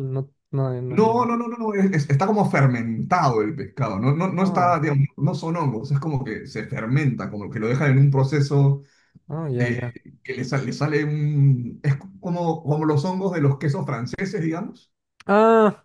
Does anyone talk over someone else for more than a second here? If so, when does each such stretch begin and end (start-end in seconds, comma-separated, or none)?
none